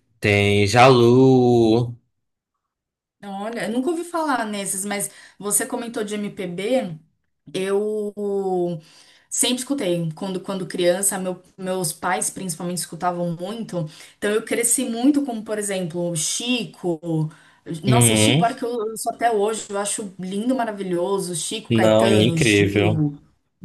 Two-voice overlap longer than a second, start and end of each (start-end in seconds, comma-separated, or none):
21.7-23.0